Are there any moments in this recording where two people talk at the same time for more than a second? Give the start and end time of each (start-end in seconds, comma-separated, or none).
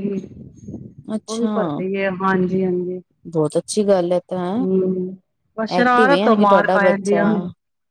5.8-7.2